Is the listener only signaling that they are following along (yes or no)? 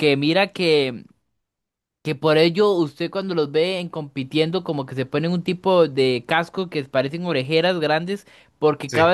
yes